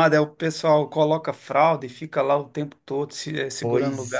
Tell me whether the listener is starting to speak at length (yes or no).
yes